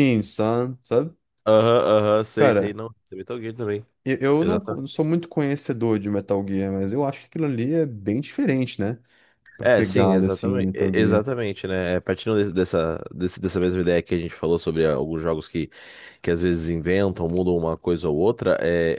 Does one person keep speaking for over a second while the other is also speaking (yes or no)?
yes